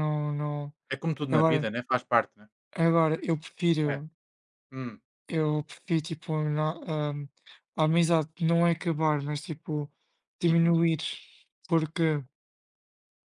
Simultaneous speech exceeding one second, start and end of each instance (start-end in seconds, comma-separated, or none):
none